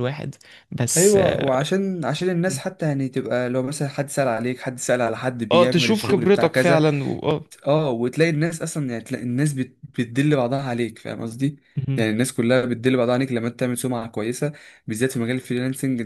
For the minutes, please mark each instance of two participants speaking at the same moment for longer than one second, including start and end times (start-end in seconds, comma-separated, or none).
5.5-6.8